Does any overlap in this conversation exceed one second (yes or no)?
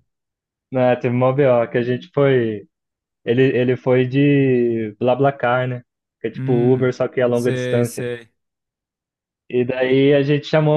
yes